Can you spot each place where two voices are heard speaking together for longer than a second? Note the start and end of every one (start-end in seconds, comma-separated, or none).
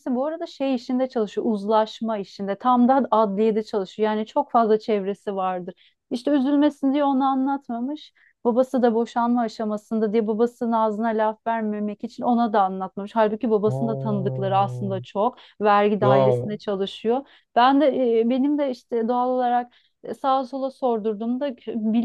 13.7-15.0